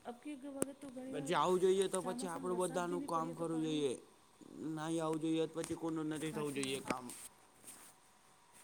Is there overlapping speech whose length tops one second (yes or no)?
yes